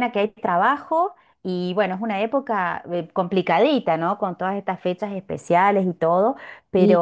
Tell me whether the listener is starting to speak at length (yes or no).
no